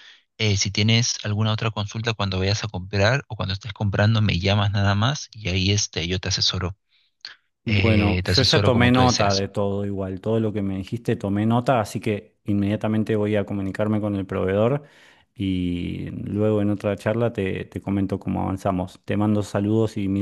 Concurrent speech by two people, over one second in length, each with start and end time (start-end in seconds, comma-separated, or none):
7.7-9.5